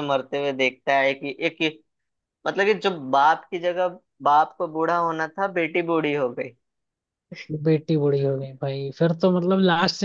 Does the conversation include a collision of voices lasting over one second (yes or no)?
no